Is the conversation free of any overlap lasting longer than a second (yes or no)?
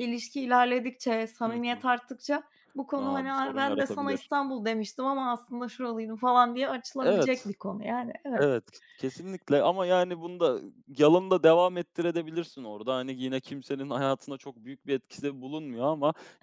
no